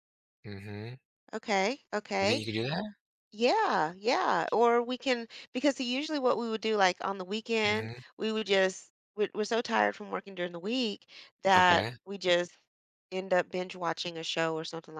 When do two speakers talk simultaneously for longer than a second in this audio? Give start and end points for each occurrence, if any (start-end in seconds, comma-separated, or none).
none